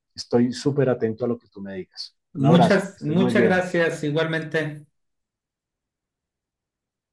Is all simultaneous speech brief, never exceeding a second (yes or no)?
no